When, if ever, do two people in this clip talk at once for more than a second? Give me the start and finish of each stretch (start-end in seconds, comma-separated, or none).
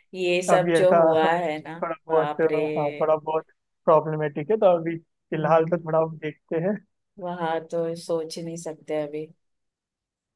0.5-2.4